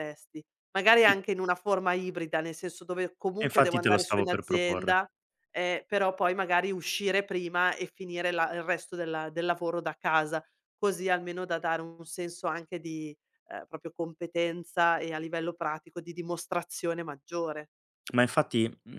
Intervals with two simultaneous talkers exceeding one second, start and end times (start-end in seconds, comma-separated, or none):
3.4-5.0